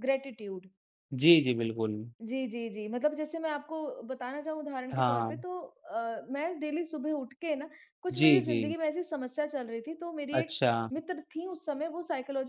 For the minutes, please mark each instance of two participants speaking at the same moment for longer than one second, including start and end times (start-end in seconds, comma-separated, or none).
none